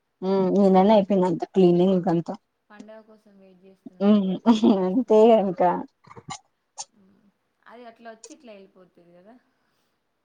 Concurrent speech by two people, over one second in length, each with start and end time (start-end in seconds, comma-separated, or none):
none